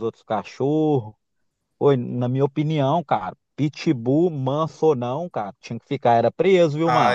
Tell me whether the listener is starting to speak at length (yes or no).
yes